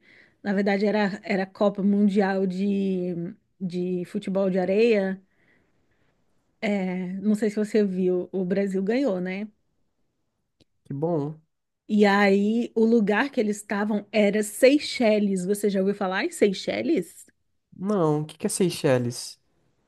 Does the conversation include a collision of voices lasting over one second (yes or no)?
no